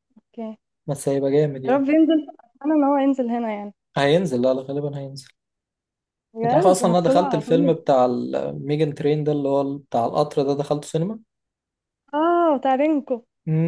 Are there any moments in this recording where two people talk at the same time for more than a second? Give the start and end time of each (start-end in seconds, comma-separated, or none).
6.4-7.7